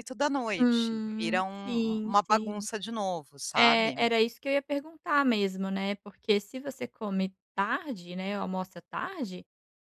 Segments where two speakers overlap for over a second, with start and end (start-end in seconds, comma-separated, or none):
0.6-2.7